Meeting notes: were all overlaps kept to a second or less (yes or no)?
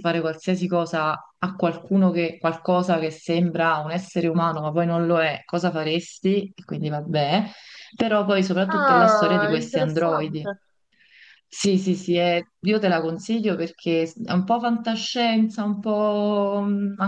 no